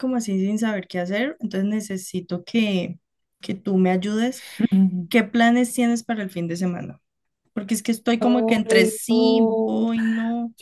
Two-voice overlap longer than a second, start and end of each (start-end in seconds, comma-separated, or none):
8.2-9.9